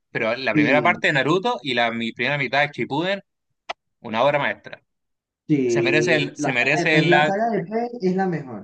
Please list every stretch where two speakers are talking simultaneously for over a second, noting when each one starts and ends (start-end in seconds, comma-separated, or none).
5.7-7.3